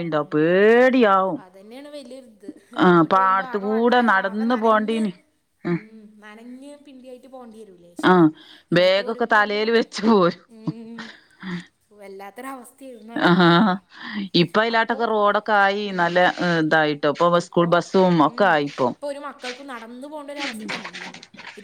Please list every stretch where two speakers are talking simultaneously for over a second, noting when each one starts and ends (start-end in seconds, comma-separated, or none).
2.9-5.0